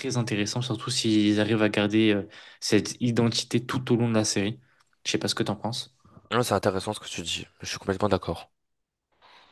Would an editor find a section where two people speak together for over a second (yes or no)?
no